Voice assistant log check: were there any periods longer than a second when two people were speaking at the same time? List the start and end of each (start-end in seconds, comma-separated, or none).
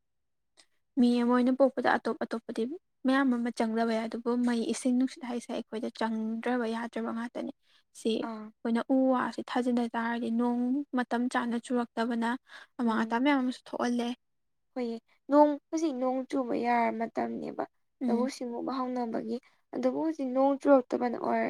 none